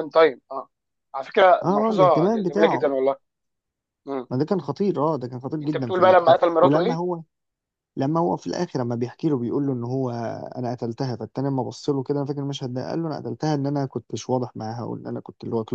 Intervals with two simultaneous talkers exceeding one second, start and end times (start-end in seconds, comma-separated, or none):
1.6-3.0, 5.6-7.0